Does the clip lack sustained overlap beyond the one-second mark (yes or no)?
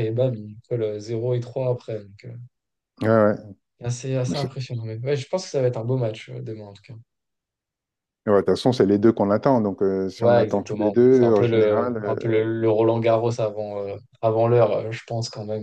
no